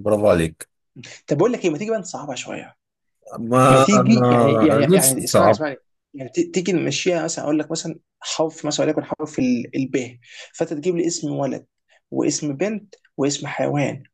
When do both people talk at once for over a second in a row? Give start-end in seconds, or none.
3.7-5.6